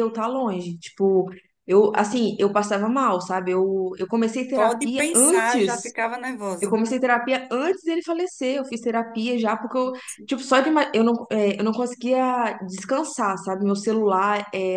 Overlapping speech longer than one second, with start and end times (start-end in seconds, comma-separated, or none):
4.5-5.9